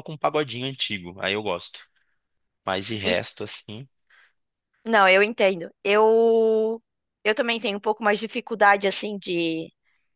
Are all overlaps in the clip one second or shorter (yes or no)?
yes